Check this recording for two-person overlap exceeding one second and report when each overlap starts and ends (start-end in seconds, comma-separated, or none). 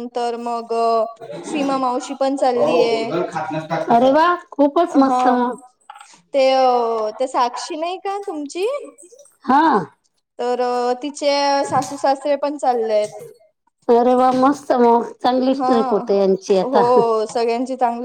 1.5-3.1